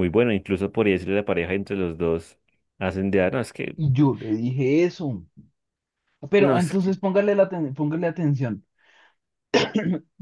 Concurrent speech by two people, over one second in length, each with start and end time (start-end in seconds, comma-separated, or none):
none